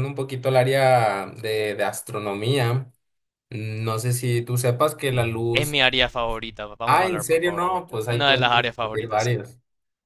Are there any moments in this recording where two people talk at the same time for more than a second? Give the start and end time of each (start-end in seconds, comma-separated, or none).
6.8-9.4